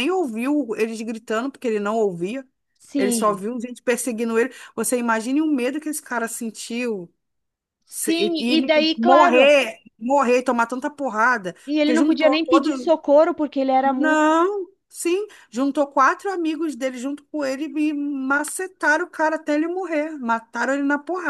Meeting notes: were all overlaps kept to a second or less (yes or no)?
no